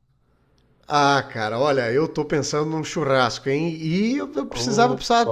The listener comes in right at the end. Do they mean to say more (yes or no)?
no